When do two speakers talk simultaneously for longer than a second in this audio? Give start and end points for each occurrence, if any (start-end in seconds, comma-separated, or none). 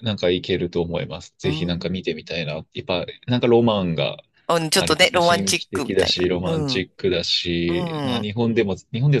4.7-6.9